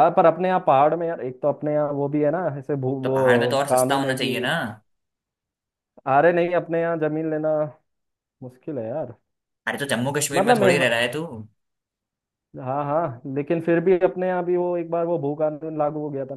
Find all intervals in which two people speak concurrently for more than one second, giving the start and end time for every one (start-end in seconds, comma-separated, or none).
3.0-4.5